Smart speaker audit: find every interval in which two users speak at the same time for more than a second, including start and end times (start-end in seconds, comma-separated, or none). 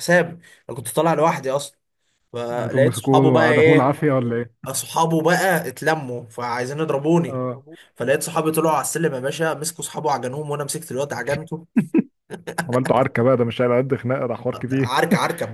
2.5-4.1